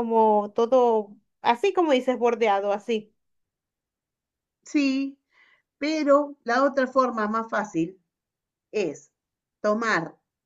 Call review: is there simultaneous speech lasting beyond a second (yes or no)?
no